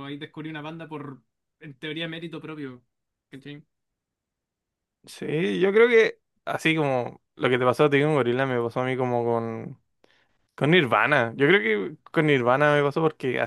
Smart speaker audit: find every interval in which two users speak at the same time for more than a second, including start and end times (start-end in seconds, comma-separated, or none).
none